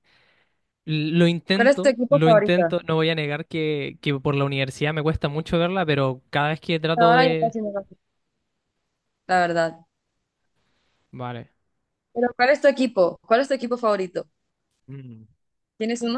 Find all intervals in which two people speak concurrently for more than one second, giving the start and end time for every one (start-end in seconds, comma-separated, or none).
1.5-2.7